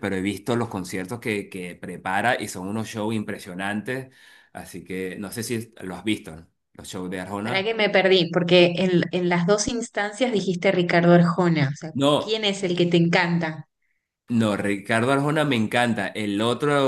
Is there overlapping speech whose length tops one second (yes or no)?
no